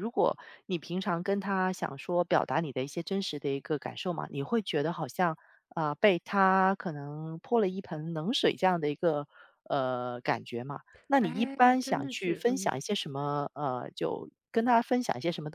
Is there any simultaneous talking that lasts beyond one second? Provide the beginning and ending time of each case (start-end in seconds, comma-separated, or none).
11.2-12.7